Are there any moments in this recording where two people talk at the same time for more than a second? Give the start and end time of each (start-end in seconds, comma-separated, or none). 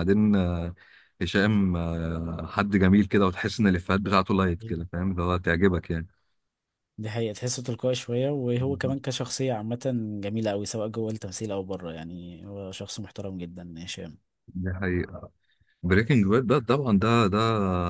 none